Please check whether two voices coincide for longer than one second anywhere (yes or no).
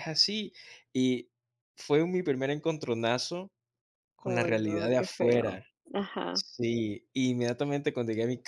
yes